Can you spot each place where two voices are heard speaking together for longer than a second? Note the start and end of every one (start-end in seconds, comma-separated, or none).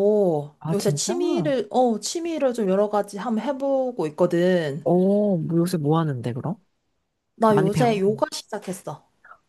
none